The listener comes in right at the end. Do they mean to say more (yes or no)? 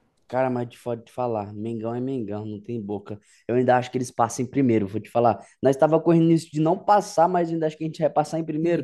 yes